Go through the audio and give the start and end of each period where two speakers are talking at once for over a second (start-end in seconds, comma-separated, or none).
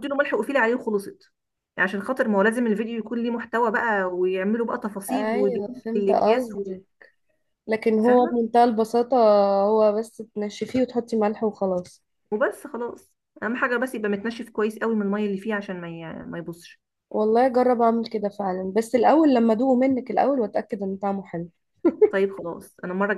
5.1-6.7